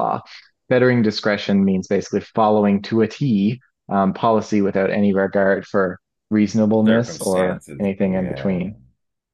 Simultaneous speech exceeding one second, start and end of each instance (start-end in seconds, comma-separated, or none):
6.9-8.6